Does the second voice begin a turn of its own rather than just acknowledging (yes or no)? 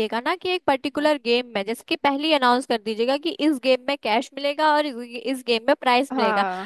no